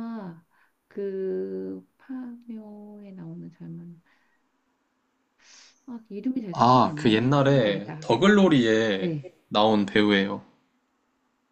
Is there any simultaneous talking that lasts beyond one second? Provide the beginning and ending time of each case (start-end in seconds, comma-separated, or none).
6.5-8.1